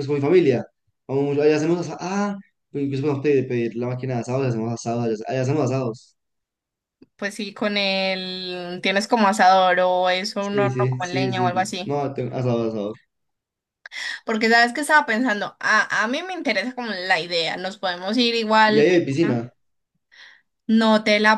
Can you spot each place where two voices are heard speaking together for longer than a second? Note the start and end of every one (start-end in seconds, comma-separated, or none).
10.4-12.0